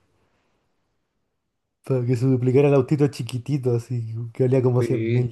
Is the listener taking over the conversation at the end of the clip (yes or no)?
yes